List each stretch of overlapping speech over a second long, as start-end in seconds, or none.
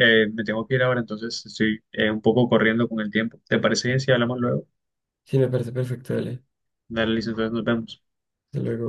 none